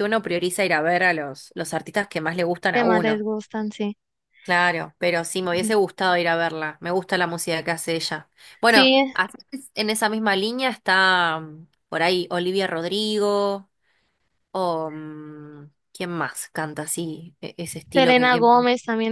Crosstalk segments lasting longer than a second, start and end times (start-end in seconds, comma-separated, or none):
none